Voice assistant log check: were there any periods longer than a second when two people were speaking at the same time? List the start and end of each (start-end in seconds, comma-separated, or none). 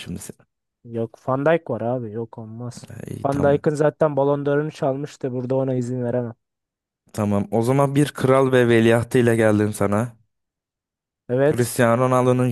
none